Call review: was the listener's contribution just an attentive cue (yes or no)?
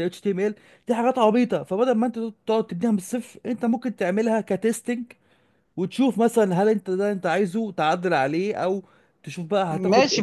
no